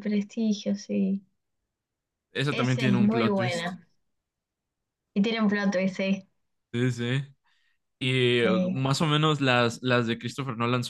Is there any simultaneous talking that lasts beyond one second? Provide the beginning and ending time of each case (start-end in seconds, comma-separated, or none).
2.5-3.7